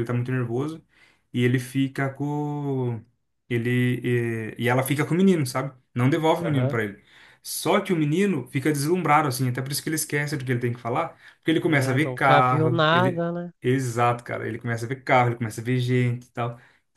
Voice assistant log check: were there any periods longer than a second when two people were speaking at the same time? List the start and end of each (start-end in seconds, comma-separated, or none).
11.6-13.2